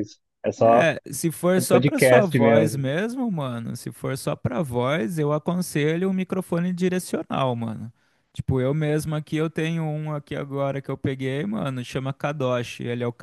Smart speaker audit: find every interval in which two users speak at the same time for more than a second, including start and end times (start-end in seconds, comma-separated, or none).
1.6-2.8